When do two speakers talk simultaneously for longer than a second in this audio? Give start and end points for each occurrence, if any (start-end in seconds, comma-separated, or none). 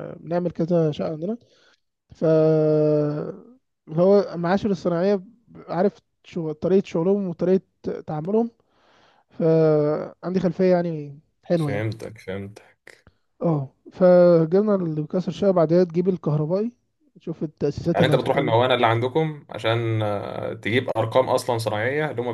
none